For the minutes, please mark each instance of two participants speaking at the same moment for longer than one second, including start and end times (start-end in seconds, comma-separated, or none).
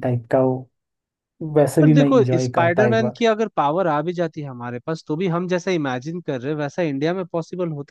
1.8-3.2